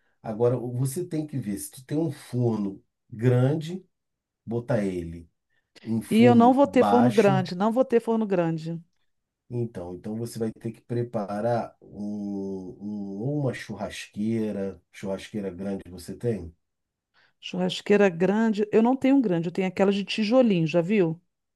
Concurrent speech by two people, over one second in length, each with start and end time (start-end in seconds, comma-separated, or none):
6.1-7.5